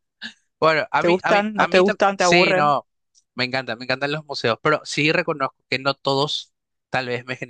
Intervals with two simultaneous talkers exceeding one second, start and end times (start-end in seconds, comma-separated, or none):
1.0-2.7